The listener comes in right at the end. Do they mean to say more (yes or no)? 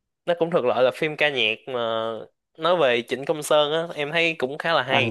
yes